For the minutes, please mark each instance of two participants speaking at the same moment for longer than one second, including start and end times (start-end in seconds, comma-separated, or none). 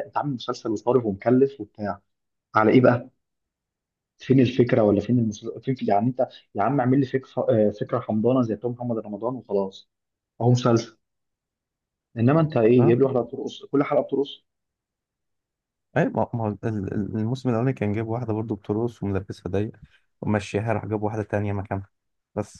none